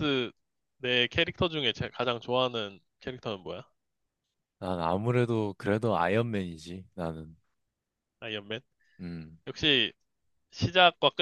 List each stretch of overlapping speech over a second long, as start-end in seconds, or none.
none